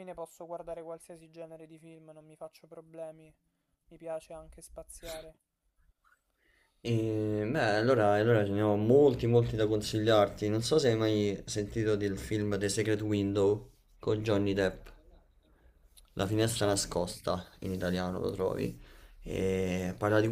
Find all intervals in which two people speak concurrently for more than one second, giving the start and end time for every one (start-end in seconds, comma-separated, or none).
none